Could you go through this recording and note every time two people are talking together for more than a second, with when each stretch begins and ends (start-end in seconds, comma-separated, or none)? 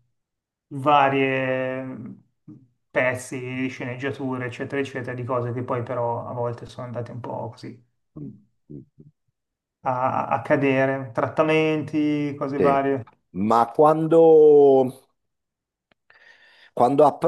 none